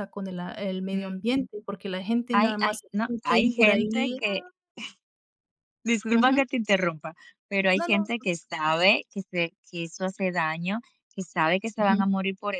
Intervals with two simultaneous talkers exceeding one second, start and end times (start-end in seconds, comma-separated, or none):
2.3-4.2